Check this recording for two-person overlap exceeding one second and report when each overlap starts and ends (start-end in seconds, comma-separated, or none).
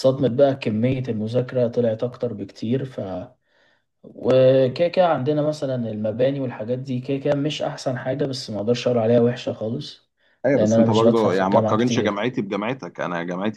10.5-12.2